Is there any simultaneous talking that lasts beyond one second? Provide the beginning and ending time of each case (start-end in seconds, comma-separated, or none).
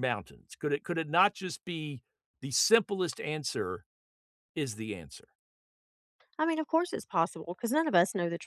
none